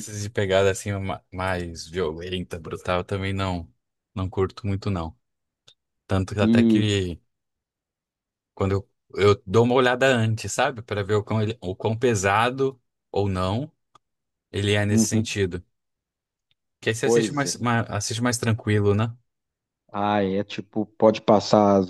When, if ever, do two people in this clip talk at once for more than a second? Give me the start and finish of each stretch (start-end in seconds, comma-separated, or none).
none